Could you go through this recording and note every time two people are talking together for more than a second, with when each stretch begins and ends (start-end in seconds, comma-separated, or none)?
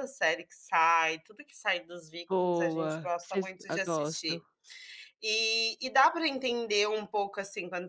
2.3-4.4